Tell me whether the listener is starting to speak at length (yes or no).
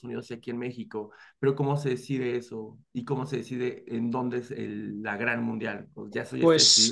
yes